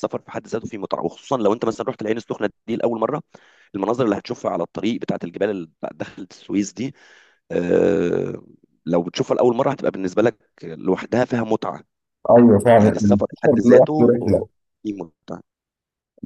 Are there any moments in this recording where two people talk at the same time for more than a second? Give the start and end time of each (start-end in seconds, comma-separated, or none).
12.8-14.1